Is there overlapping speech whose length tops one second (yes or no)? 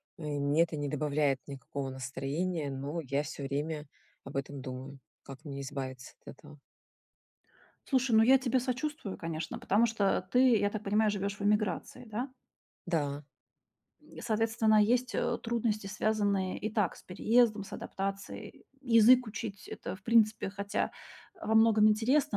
no